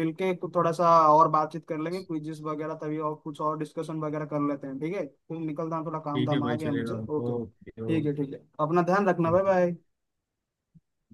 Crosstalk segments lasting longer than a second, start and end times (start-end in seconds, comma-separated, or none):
6.1-7.8